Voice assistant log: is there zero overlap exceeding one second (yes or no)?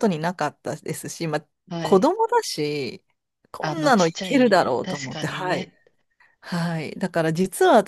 no